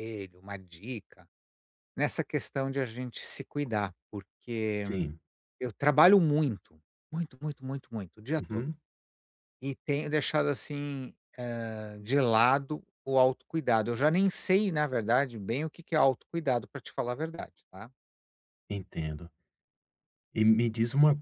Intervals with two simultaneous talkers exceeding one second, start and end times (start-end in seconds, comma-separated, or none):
none